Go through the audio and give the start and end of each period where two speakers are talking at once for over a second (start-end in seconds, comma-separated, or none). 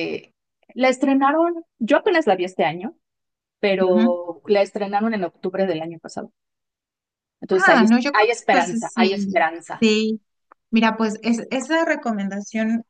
7.5-9.8